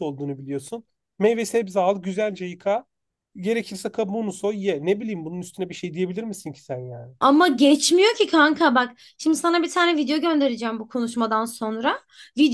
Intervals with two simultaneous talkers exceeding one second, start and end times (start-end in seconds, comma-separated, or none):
none